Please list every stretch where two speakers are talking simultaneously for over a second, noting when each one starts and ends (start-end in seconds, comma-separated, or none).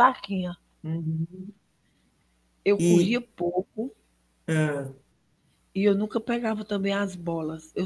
none